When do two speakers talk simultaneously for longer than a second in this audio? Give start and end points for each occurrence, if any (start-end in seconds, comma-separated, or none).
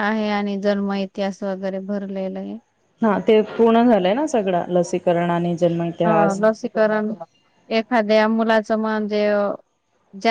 none